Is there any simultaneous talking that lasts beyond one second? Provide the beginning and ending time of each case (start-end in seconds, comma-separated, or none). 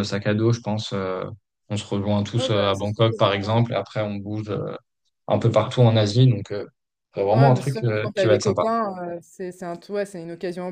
2.4-3.6, 7.3-8.7